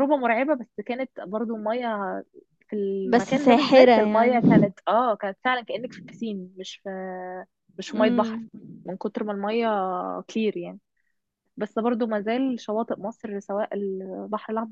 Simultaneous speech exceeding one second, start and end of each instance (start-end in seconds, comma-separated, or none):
3.1-4.7